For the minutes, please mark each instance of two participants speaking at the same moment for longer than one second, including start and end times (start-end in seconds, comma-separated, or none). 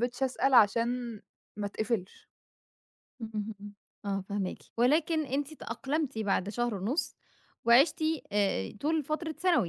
none